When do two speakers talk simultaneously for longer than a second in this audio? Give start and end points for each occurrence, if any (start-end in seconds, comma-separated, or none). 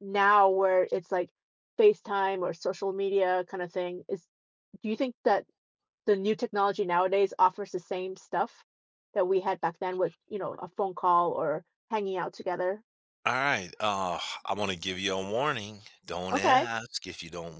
none